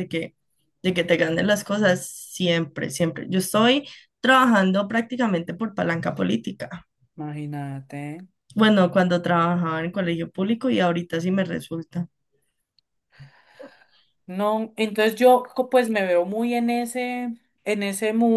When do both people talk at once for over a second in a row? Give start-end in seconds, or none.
none